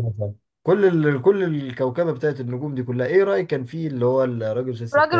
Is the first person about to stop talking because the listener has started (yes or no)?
yes